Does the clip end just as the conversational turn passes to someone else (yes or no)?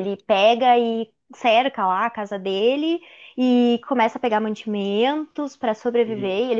no